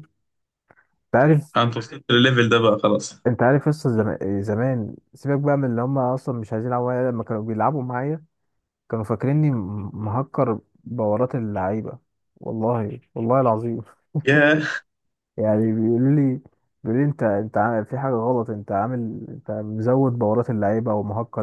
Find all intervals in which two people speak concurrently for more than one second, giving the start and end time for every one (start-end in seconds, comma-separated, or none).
none